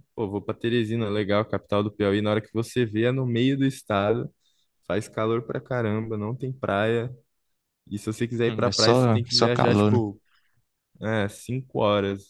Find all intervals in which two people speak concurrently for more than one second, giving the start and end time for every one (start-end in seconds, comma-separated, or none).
8.5-10.0